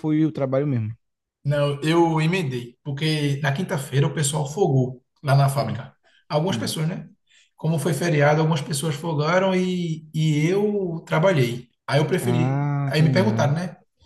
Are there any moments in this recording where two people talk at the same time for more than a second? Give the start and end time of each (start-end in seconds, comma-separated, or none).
12.2-13.5